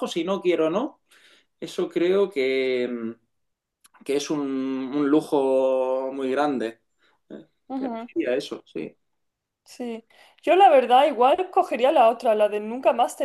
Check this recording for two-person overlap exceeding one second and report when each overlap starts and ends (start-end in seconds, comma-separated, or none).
none